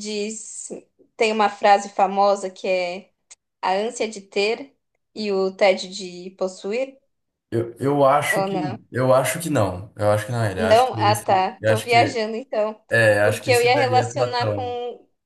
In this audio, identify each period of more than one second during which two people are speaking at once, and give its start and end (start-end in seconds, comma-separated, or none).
10.6-12.2, 13.2-14.6